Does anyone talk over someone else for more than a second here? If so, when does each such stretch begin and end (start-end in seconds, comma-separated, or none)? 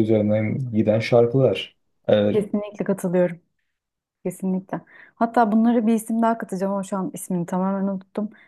none